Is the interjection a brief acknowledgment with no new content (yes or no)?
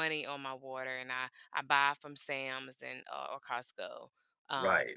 no